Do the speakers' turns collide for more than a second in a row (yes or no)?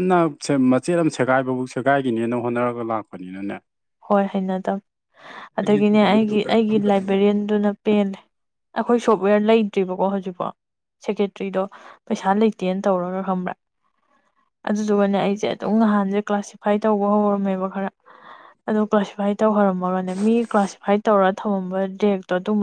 yes